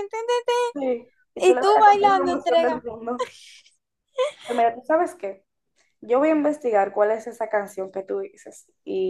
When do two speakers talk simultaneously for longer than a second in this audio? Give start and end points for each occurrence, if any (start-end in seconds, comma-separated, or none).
1.4-2.9